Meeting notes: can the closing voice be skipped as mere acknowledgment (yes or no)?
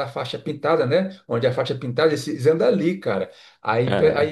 yes